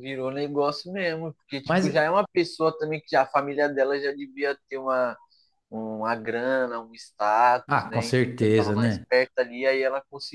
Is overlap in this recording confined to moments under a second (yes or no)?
no